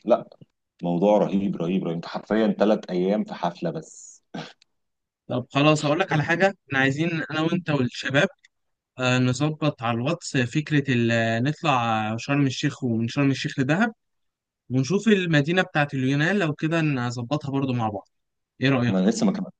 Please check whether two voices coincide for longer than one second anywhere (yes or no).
no